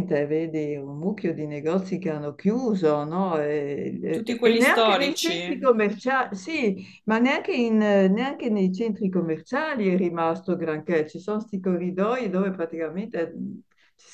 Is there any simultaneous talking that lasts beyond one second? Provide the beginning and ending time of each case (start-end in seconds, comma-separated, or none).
4.1-5.7